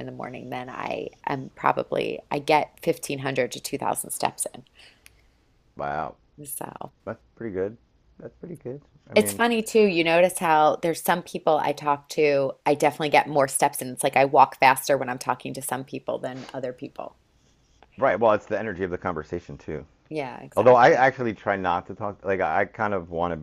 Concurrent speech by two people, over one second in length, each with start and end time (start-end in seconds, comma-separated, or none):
none